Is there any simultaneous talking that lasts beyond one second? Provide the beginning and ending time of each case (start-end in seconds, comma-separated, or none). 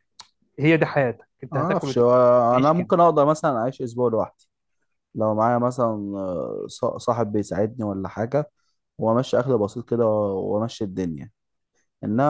none